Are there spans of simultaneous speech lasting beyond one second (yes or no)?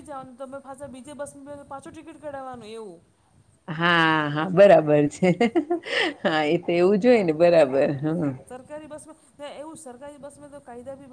no